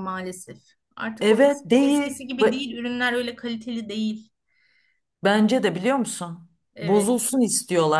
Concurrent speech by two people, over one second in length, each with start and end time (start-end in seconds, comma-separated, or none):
1.2-2.6